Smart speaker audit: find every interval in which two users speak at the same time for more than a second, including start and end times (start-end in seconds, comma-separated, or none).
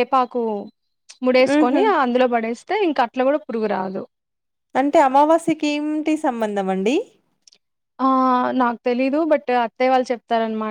none